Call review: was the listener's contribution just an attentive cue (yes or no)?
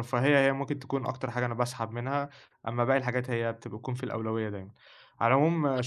yes